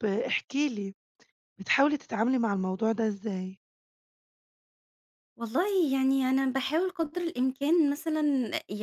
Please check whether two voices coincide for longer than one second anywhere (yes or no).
no